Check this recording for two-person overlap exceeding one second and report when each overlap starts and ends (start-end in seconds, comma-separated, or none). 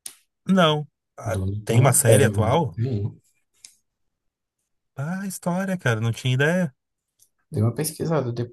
1.2-2.8